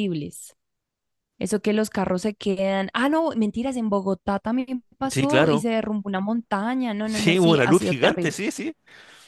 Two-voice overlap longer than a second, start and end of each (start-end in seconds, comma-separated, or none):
7.0-8.4